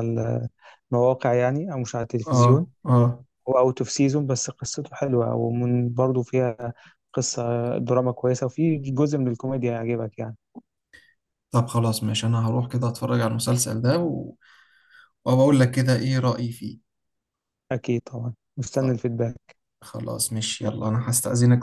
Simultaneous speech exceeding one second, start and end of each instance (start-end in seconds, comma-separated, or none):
none